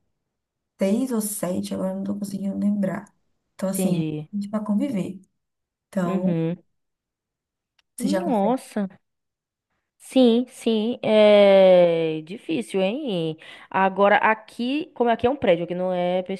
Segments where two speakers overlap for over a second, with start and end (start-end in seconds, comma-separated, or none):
none